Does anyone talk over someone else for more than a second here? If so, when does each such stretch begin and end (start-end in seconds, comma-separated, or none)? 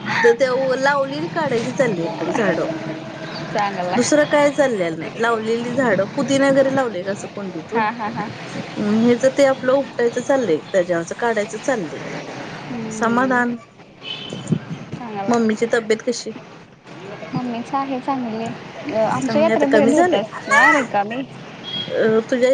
19.2-20.6